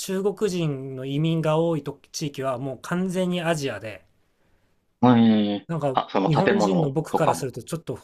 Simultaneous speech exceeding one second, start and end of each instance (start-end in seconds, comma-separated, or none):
5.7-7.5